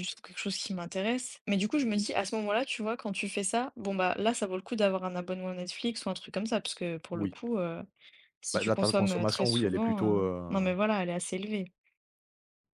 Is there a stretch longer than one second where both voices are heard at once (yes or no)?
yes